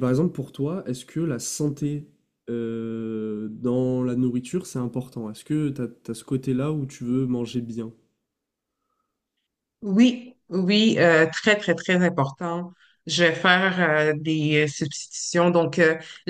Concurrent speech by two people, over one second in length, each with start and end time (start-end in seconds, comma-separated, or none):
none